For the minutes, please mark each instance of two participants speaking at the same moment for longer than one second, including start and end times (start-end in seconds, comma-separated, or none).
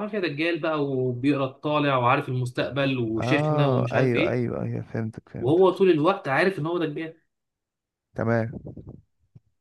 3.2-4.4